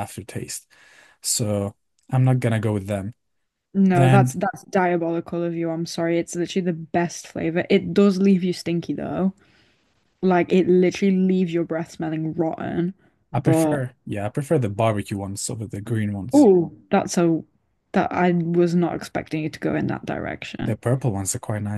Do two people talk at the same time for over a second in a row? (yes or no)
no